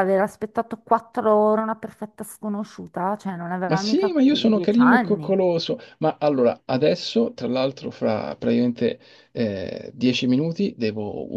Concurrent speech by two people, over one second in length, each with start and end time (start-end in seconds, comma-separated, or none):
3.6-5.4